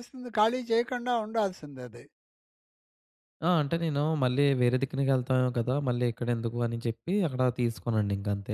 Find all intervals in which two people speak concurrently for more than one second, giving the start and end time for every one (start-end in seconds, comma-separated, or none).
none